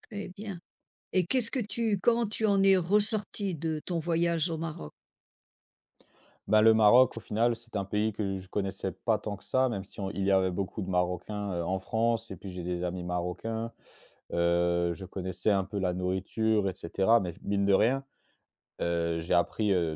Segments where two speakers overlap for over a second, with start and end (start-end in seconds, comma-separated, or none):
none